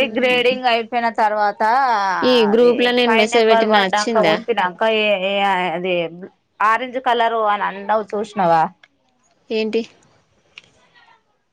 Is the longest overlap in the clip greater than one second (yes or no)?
yes